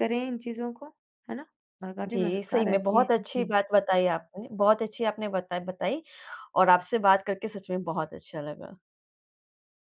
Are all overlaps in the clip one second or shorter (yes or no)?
no